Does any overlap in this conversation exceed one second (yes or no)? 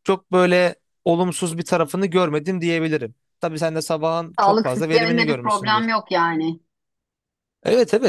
yes